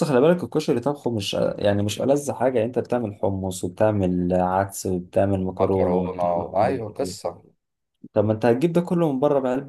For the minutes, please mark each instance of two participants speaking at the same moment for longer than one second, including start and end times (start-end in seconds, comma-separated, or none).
5.5-6.8